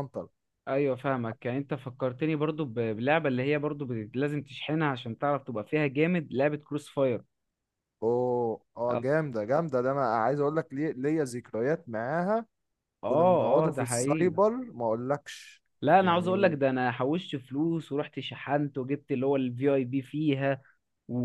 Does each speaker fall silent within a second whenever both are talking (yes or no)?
no